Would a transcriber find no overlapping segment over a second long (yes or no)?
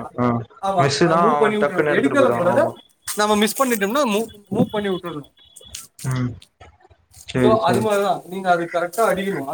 no